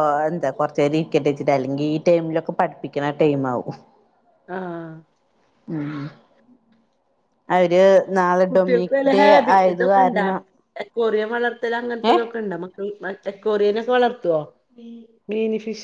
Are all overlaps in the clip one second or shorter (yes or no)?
yes